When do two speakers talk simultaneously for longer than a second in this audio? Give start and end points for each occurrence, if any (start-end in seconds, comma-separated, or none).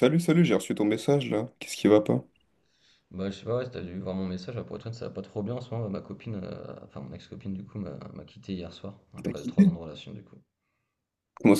none